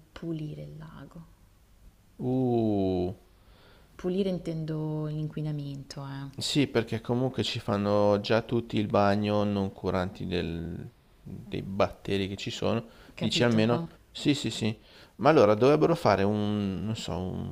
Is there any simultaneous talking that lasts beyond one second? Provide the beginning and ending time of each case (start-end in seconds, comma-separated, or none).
none